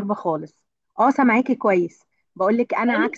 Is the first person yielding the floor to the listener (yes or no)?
no